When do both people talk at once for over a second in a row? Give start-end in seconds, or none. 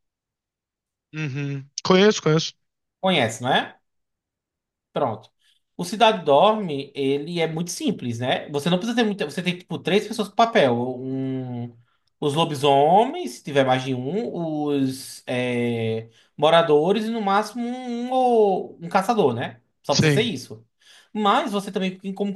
none